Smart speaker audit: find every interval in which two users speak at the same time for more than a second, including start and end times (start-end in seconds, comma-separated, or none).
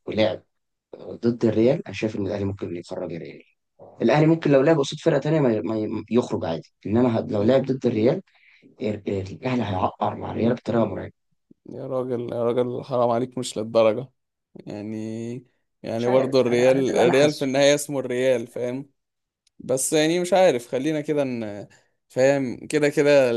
15.9-17.5